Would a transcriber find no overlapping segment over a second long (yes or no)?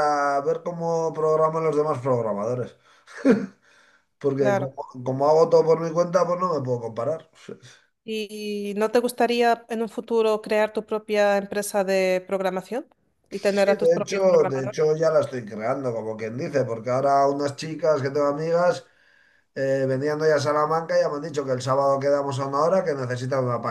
no